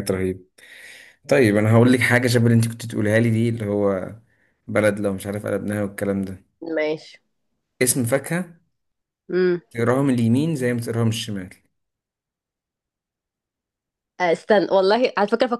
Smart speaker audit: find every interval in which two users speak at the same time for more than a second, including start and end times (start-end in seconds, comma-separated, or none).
none